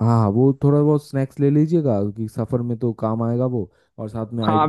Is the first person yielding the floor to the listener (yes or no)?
yes